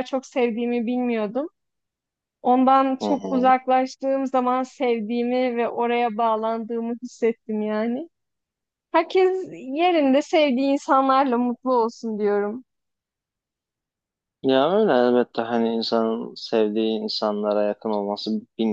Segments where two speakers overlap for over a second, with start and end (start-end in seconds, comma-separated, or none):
none